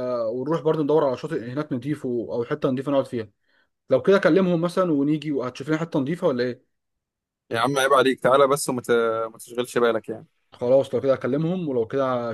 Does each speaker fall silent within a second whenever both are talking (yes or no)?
yes